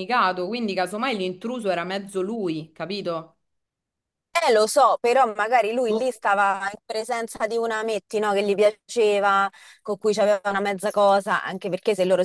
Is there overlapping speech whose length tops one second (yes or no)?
no